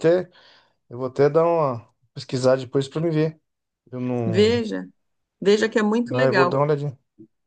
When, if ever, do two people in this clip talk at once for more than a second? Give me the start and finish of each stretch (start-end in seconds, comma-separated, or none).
none